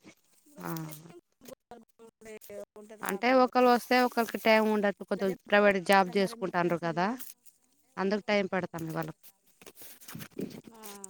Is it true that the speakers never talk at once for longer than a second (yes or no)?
no